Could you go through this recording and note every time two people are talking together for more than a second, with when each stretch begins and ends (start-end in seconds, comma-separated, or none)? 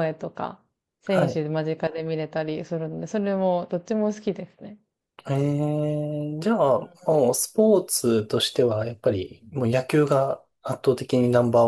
none